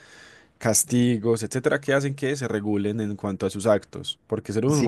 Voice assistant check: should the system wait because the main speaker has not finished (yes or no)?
no